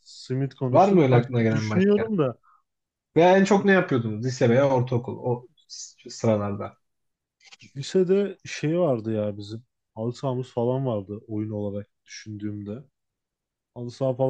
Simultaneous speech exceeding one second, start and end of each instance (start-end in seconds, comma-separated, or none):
0.7-2.1